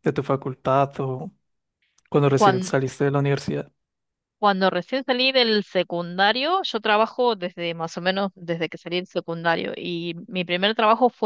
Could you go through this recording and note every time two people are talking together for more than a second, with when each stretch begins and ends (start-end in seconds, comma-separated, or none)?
none